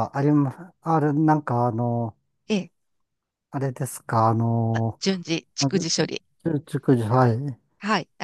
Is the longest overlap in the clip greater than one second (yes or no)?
no